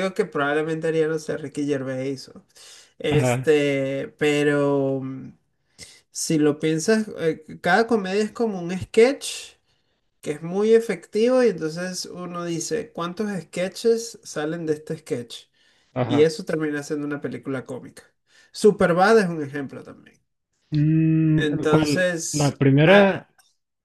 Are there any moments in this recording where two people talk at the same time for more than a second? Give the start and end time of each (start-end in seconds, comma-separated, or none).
21.4-23.3